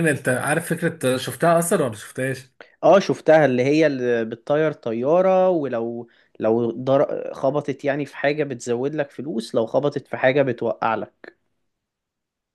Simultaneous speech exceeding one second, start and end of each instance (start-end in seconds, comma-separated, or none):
none